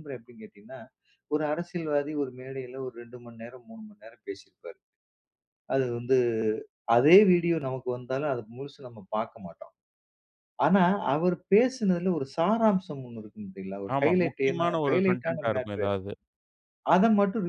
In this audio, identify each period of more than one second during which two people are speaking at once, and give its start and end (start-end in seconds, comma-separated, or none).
13.9-15.9